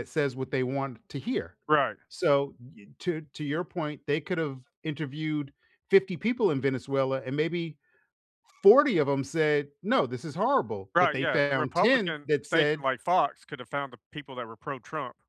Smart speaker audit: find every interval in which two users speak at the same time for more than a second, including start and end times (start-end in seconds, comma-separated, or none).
10.9-12.9